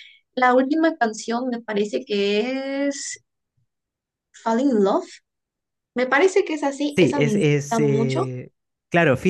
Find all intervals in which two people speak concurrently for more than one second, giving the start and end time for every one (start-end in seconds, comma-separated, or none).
7.0-8.3